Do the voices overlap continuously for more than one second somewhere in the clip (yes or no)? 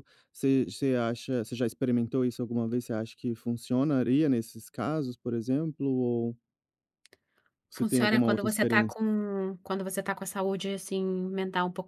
yes